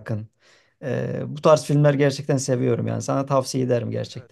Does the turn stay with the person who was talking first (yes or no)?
no